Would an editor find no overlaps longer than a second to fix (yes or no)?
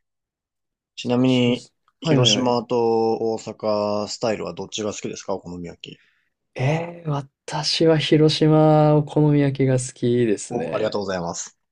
no